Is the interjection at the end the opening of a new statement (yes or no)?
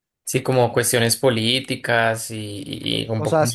yes